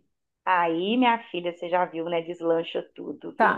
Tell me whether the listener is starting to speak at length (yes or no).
yes